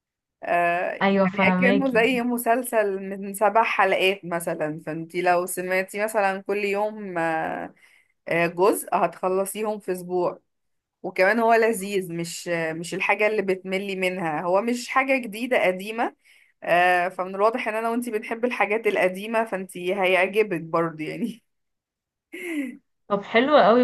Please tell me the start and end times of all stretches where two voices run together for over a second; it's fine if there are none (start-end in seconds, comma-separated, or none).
1.0-2.3